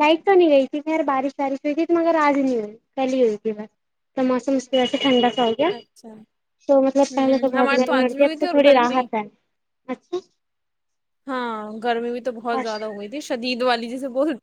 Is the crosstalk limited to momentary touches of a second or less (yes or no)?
no